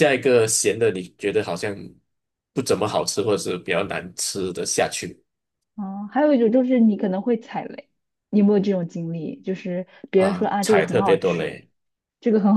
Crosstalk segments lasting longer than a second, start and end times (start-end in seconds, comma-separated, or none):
10.1-11.6